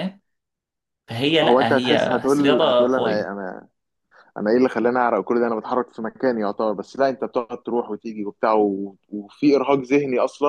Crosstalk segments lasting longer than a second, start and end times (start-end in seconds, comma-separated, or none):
1.4-3.3